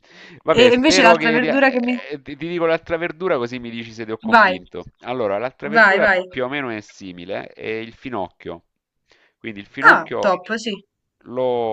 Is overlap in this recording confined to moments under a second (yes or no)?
no